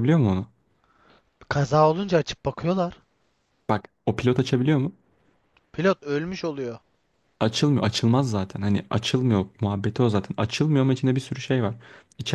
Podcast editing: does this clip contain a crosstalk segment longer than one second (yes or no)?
no